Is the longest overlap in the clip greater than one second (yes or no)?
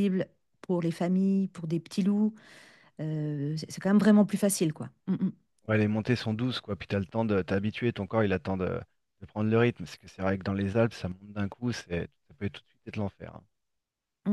no